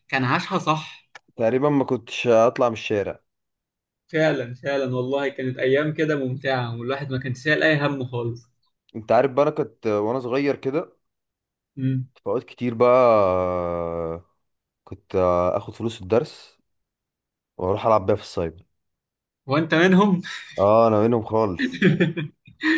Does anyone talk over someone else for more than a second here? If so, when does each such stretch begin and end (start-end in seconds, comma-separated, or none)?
none